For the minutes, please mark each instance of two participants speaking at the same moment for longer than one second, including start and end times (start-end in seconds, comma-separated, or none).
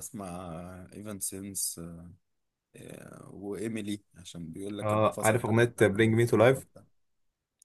4.8-6.7